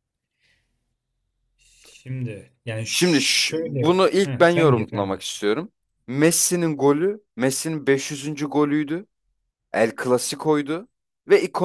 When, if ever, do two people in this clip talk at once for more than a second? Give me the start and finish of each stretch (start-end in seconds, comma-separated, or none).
2.9-5.2